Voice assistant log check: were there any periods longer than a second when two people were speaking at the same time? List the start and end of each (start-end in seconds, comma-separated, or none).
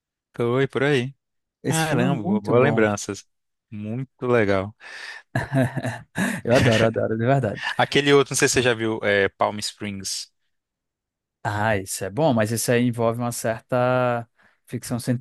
1.7-2.9